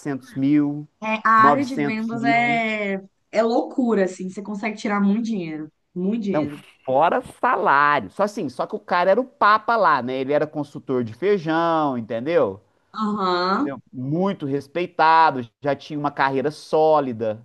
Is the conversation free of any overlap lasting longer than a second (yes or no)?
no